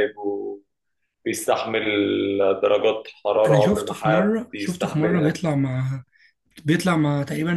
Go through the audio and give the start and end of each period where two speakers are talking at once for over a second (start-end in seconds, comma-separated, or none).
3.5-5.4